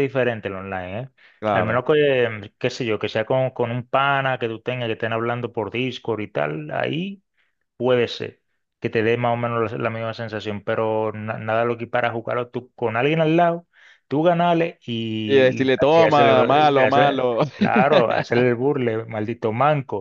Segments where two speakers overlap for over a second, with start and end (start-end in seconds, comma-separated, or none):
15.3-17.4